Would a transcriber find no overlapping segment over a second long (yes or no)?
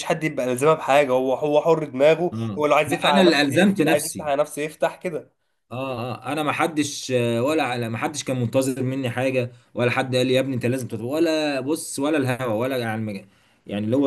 no